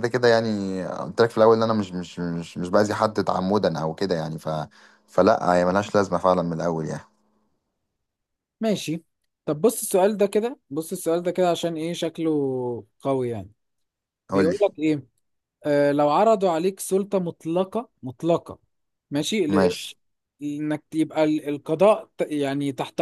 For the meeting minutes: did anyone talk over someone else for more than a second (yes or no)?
no